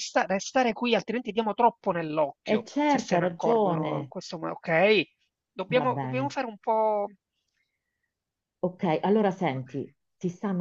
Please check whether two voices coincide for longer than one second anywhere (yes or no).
yes